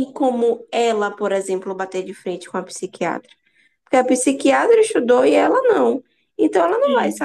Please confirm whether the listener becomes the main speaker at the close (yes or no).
no